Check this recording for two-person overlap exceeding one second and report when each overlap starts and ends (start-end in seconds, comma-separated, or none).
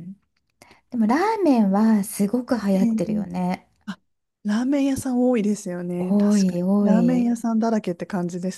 6.0-7.3